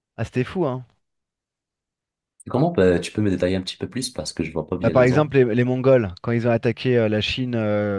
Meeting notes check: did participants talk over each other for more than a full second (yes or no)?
no